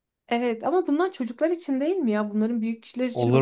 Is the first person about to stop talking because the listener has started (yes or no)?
yes